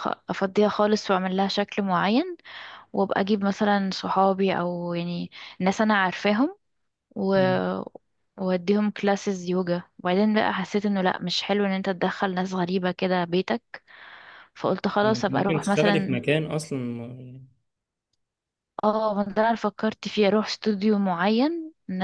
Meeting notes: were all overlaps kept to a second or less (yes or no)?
no